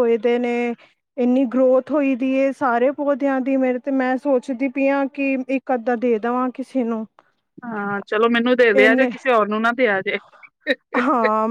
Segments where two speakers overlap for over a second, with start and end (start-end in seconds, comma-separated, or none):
none